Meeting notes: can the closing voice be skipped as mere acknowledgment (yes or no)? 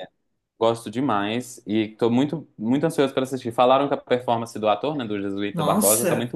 no